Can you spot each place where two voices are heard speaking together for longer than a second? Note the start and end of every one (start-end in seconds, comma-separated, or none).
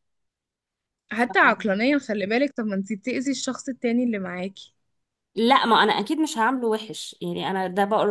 none